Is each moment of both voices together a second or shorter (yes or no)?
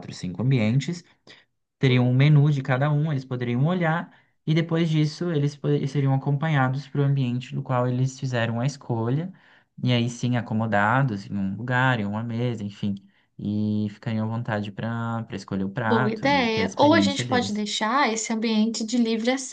no